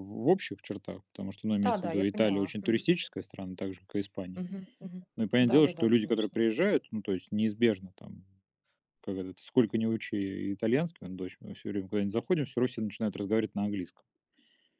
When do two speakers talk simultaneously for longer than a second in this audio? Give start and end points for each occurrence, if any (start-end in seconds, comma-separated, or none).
1.6-2.9, 5.2-6.4